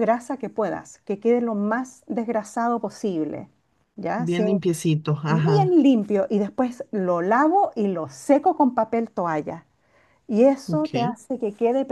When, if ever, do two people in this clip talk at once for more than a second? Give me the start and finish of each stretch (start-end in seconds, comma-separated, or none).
none